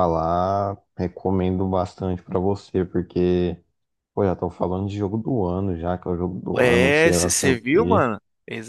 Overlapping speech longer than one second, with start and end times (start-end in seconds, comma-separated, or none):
6.6-8.1